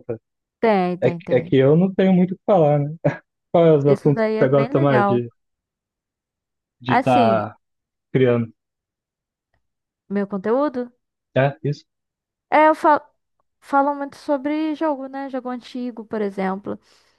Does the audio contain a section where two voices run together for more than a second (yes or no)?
yes